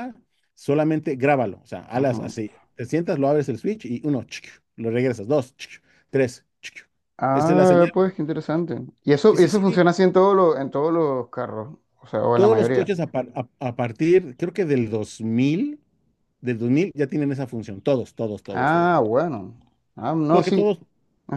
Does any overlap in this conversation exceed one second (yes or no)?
no